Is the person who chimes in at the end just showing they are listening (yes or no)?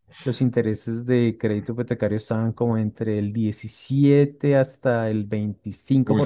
no